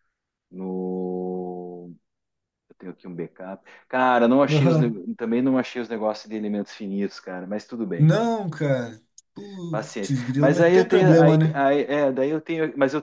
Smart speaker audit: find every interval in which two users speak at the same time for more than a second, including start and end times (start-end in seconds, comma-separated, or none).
9.7-11.6